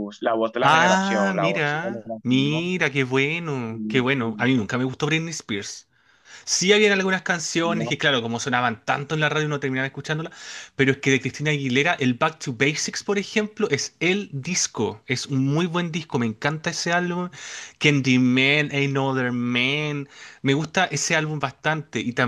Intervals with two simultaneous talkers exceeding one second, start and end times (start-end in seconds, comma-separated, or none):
0.6-2.7